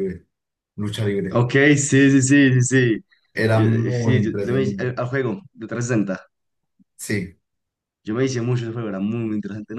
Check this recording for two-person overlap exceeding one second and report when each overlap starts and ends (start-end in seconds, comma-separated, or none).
3.5-5.0